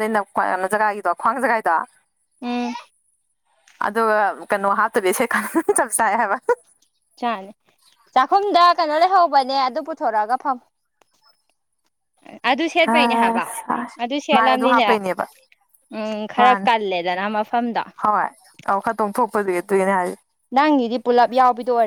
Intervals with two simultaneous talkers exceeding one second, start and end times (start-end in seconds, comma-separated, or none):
none